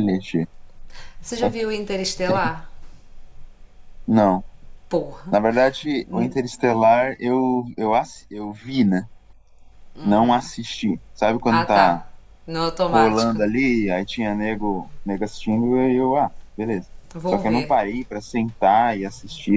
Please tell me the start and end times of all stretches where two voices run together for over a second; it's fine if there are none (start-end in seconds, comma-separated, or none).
none